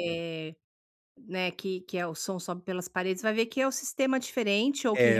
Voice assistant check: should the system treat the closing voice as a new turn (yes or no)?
no